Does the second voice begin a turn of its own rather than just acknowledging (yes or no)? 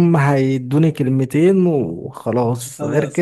no